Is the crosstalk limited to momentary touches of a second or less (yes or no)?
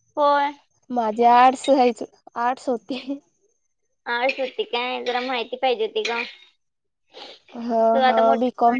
yes